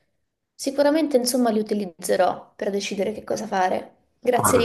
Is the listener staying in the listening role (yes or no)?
no